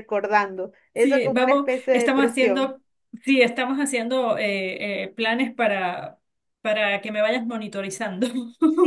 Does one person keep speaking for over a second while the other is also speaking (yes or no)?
yes